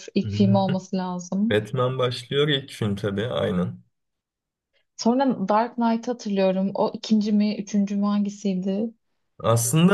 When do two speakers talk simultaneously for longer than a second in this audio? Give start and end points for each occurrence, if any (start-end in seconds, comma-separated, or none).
none